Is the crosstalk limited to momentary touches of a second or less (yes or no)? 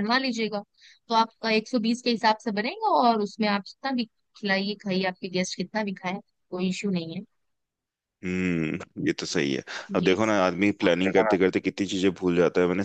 yes